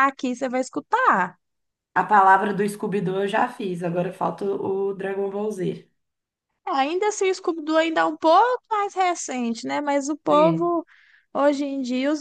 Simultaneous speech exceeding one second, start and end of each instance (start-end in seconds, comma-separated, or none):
none